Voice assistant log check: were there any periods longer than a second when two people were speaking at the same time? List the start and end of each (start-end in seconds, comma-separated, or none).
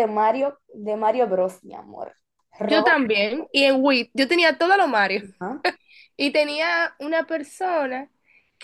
none